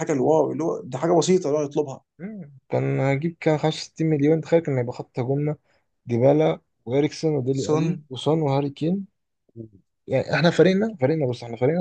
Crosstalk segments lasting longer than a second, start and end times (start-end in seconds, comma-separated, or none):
none